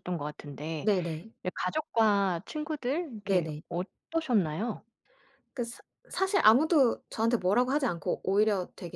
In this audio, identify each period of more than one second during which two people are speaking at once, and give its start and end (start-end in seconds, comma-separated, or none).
none